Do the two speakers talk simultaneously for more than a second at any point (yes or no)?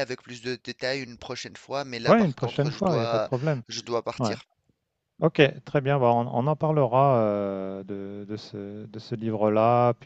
yes